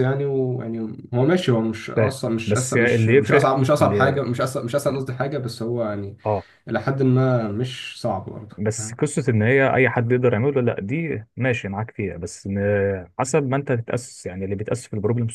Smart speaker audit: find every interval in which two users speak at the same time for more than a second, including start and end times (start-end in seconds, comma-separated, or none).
1.9-4.2